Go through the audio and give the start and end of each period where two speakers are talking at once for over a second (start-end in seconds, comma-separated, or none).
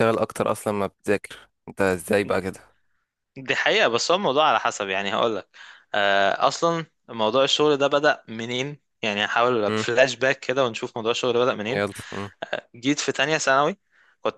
none